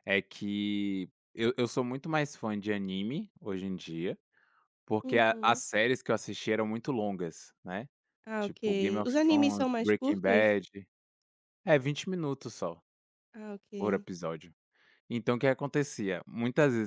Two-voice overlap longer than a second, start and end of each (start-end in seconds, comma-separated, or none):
8.4-10.6